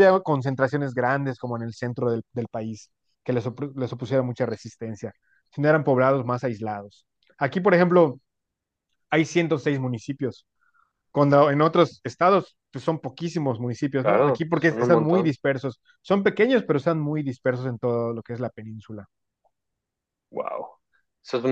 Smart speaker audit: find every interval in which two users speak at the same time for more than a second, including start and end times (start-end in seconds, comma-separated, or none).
14.0-15.3